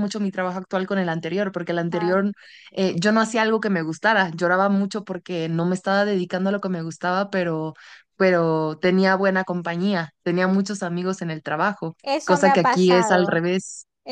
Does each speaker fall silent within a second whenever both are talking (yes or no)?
no